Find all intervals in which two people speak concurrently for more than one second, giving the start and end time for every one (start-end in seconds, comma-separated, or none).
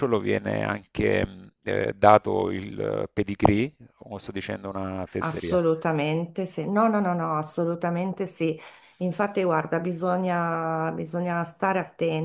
none